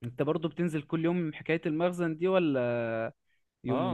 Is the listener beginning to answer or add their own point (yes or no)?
yes